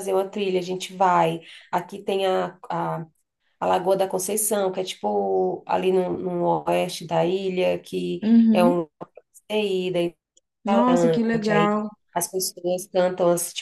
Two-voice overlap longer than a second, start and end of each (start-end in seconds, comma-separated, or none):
none